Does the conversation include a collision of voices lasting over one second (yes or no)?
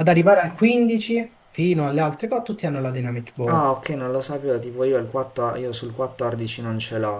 no